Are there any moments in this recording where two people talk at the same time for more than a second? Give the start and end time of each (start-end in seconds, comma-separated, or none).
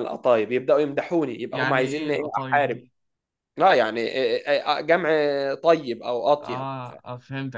1.5-2.8